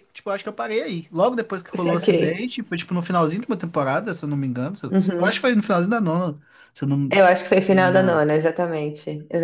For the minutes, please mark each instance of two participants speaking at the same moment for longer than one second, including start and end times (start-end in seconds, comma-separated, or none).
none